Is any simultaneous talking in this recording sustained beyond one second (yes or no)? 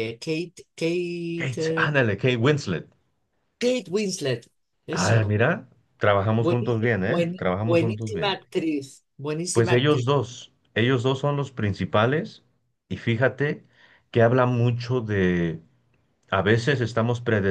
yes